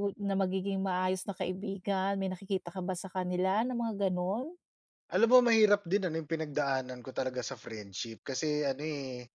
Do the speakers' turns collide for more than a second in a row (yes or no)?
no